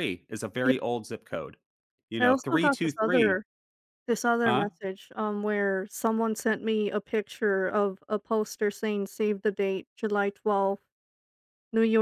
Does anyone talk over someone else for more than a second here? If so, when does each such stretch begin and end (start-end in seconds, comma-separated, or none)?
2.2-3.4